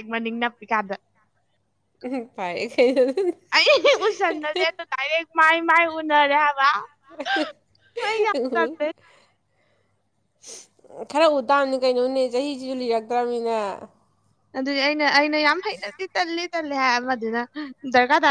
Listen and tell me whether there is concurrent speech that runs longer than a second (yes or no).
no